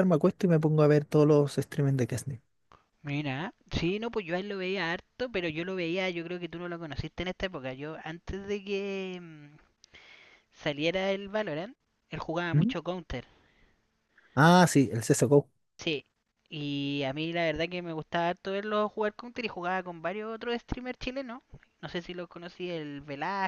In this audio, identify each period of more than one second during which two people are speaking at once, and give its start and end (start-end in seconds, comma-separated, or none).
none